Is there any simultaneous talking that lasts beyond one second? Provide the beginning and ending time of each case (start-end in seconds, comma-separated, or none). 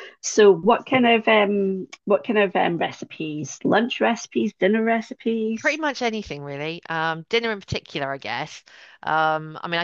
none